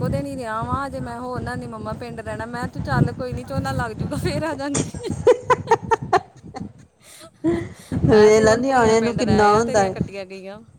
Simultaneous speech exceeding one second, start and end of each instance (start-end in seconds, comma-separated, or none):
8.1-9.9